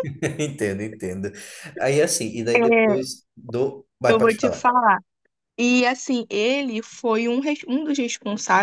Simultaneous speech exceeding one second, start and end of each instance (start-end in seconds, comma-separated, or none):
none